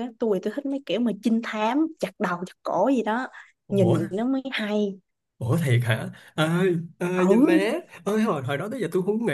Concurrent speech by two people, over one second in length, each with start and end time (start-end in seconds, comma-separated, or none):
none